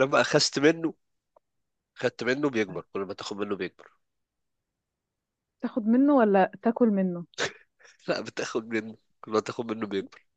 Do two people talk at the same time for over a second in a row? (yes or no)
no